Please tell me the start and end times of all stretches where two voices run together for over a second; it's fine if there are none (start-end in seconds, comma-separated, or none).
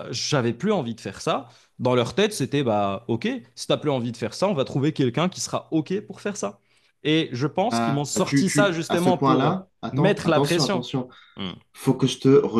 7.6-10.8